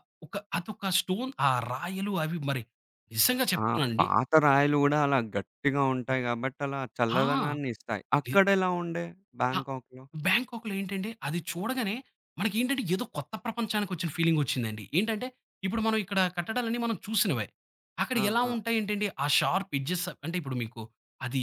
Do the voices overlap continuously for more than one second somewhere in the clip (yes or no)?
no